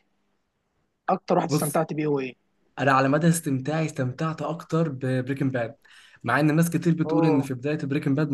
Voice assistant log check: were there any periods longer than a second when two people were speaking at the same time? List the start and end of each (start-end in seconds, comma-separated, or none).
none